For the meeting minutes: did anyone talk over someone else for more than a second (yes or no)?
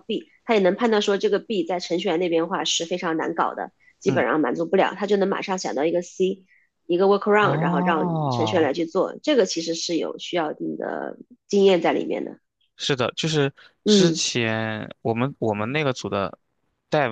yes